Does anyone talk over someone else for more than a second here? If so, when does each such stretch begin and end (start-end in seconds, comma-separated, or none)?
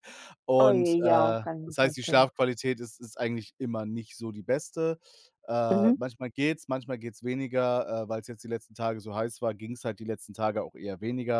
0.6-2.3